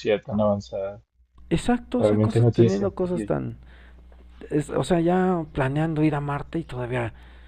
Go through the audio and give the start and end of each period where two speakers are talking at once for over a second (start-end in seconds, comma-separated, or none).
2.0-3.3